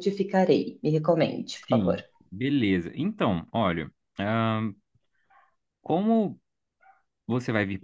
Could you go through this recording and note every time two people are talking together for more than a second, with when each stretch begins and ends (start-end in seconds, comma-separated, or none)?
none